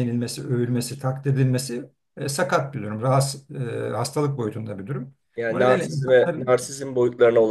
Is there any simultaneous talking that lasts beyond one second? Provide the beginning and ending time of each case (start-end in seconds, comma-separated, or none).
5.3-6.6